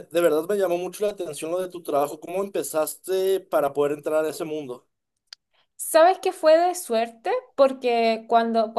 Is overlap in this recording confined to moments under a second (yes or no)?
yes